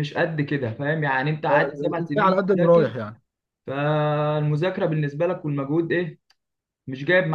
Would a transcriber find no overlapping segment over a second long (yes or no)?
no